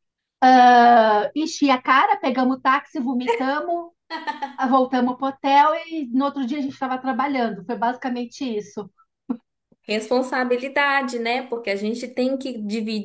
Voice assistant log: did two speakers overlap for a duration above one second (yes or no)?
no